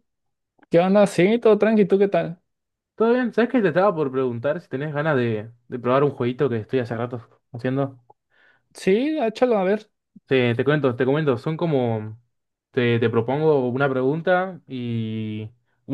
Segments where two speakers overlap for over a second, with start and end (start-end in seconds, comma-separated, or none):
none